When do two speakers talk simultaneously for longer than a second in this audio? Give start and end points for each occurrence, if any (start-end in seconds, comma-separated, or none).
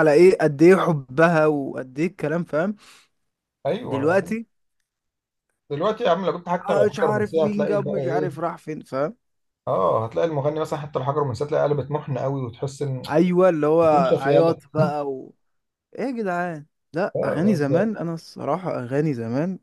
6.7-8.3